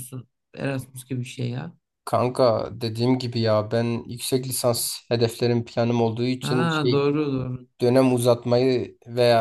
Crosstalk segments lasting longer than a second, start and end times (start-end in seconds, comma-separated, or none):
none